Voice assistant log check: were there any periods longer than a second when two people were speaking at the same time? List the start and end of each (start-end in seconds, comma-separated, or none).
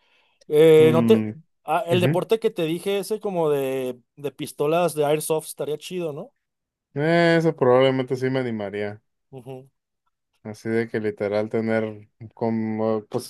none